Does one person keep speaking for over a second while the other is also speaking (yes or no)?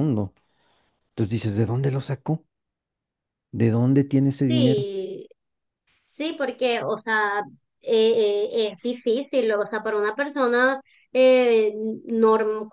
no